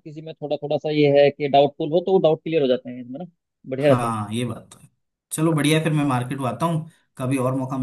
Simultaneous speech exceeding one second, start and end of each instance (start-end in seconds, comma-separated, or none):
none